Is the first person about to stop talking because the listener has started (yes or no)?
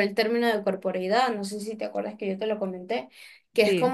no